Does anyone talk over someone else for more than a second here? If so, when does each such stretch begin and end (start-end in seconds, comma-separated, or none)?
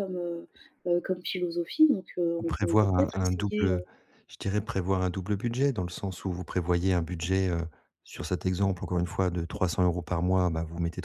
2.4-3.8